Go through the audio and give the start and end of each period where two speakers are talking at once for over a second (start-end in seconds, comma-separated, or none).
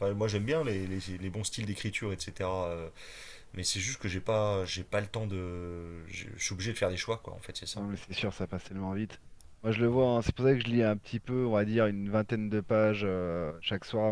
none